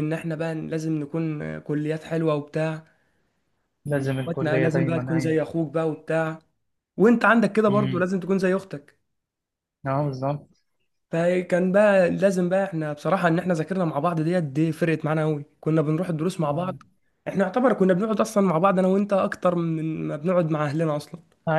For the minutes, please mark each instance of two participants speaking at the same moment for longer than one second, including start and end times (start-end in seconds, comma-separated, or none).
3.9-5.4